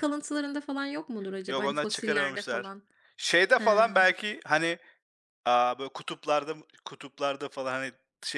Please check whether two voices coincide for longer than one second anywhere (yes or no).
yes